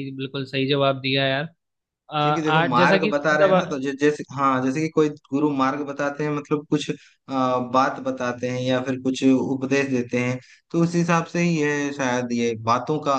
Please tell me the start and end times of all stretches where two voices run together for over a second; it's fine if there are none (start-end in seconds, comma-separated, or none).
2.2-3.8